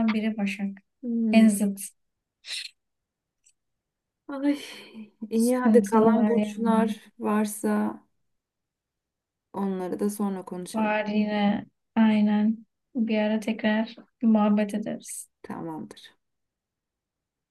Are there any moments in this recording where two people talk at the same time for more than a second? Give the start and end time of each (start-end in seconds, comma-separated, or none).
5.3-7.0